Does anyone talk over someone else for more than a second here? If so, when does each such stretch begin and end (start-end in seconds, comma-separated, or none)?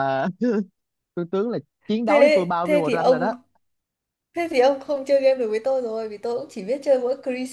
2.0-3.3